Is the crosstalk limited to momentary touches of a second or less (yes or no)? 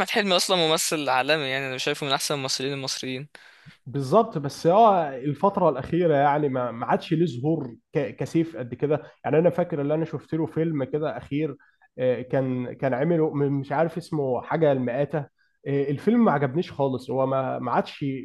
yes